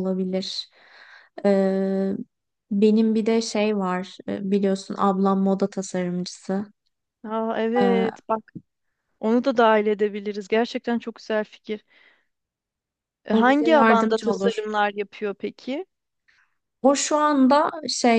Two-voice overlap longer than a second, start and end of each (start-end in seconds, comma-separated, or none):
13.3-14.6